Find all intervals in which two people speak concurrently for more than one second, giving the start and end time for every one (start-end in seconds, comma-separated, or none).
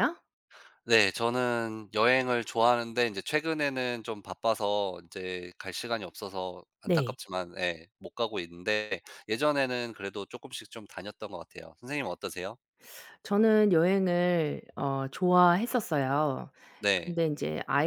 none